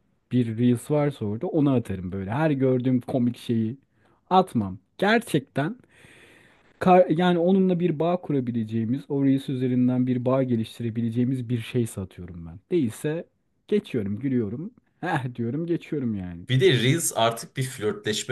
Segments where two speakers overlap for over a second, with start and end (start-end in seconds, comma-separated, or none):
none